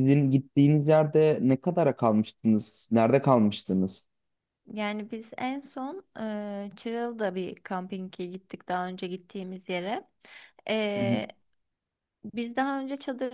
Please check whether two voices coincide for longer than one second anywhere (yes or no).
no